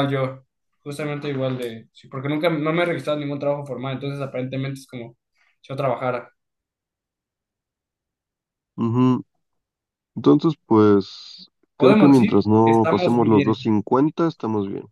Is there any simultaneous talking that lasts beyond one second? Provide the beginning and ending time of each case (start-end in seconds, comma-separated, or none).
11.8-13.6